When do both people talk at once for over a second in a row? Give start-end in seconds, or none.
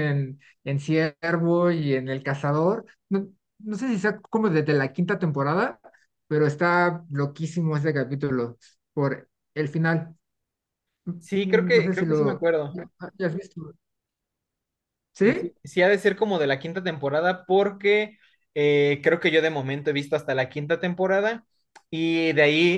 11.2-12.5